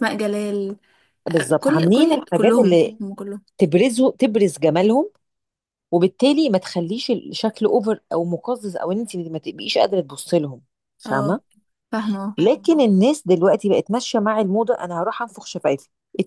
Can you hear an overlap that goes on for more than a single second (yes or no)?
yes